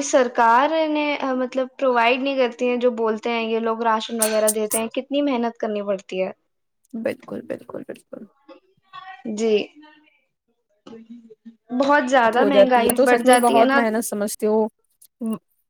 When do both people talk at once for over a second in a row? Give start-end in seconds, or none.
12.2-13.8